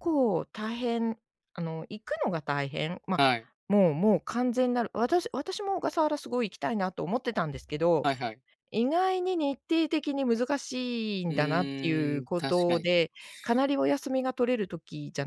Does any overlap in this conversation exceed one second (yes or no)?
yes